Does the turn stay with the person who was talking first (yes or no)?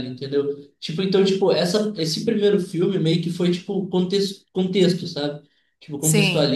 yes